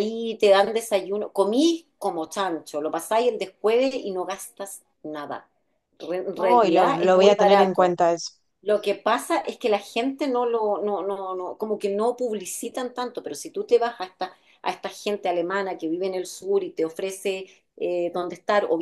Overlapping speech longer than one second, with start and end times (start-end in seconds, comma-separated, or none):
6.4-7.9